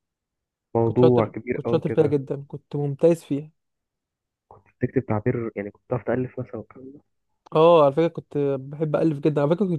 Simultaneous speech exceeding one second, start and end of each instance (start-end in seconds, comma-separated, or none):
0.8-2.1